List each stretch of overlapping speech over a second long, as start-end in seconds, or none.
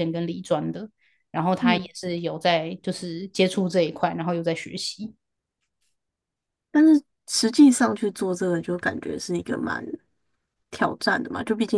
none